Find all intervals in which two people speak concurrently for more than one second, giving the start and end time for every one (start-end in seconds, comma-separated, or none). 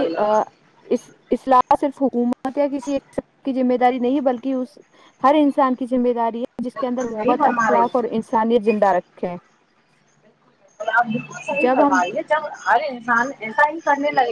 6.8-8.0